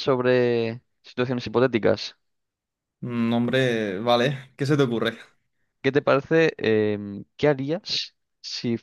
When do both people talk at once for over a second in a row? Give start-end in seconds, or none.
none